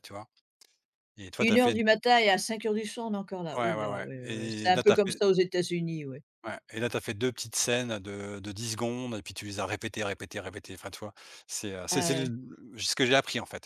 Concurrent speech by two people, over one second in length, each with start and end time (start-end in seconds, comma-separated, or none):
3.6-5.2